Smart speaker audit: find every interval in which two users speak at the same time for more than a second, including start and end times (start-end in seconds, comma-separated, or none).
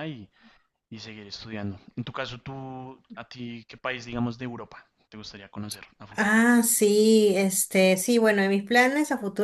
none